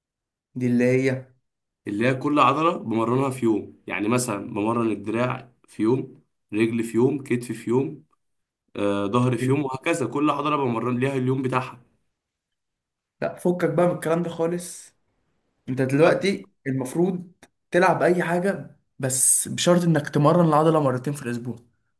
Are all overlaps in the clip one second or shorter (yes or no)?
yes